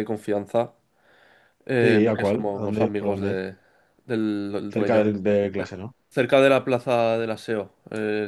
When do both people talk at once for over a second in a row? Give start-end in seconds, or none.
1.8-3.4